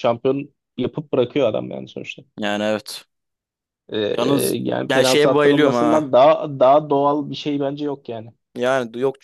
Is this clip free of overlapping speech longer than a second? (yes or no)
no